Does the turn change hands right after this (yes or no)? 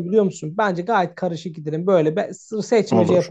no